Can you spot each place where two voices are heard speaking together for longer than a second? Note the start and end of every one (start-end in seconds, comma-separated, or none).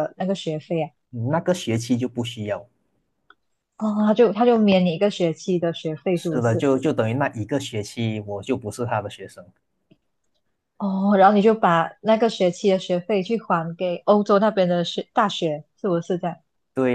none